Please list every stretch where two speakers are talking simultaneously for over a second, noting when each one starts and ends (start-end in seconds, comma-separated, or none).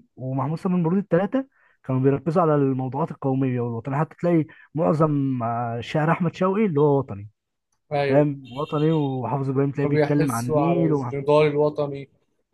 9.8-11.1